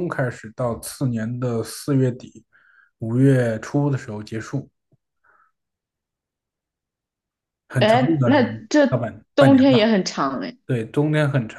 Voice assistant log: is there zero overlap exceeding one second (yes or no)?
no